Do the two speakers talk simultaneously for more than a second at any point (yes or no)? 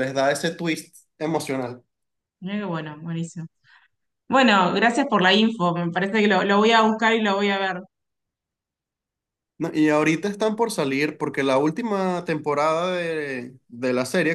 no